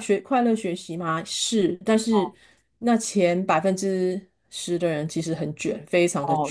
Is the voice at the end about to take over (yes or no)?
yes